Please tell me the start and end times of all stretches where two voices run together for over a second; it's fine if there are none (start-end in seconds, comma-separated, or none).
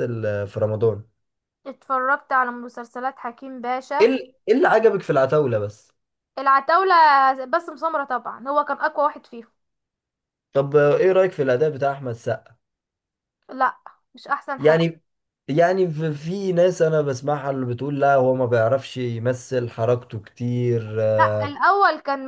none